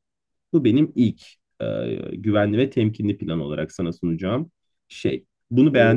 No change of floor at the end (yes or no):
no